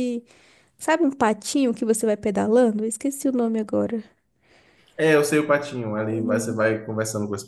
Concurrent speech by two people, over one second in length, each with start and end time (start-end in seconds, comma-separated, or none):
none